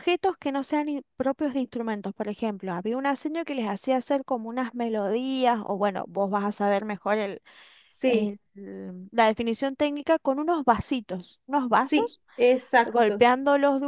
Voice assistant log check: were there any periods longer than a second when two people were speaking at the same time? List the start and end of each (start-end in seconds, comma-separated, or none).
none